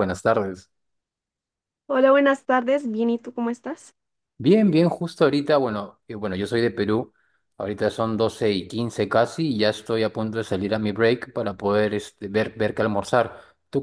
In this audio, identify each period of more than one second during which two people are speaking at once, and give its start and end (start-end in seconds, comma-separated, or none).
none